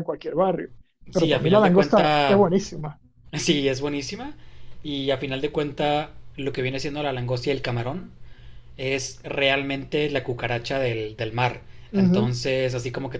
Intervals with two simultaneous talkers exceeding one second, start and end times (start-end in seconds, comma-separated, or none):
1.1-2.4